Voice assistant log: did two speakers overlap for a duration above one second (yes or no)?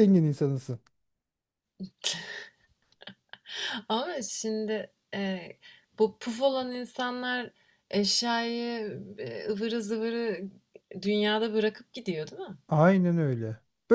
no